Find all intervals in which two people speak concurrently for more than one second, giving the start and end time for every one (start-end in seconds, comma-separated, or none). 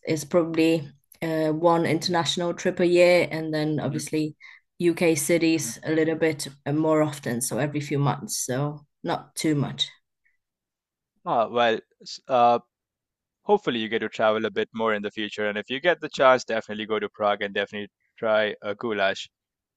none